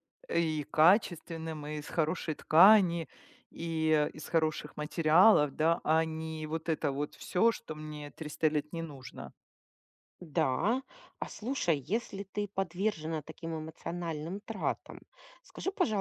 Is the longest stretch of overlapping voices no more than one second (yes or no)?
yes